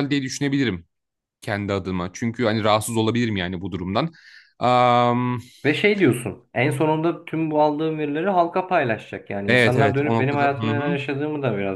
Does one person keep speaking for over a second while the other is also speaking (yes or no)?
yes